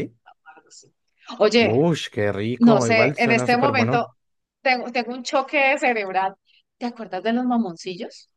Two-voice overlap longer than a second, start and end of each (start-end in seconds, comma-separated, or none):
2.6-4.1